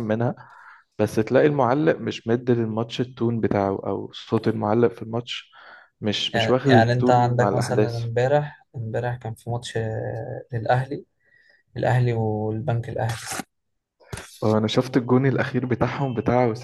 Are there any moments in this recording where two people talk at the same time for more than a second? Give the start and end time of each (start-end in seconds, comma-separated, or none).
6.3-8.1